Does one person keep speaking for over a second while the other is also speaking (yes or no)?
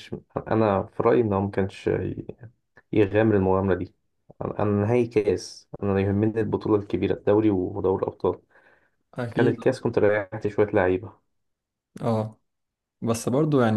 no